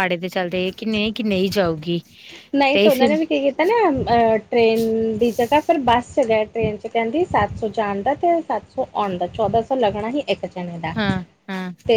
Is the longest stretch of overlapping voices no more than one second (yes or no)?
yes